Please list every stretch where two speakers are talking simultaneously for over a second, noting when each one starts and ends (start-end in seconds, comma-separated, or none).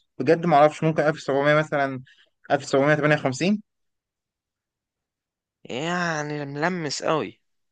none